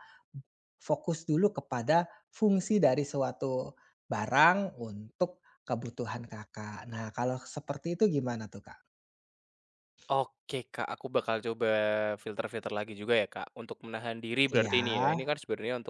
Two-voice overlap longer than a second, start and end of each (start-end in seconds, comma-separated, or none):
none